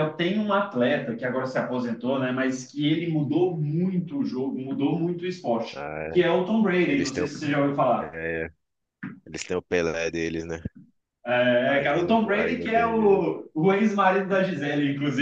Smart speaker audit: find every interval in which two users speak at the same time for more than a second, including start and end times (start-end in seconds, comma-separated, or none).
11.7-13.3